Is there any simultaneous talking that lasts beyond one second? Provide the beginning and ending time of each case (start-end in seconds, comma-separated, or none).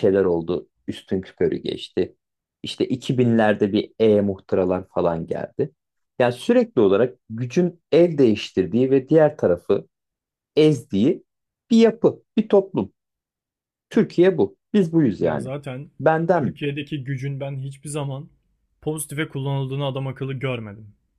none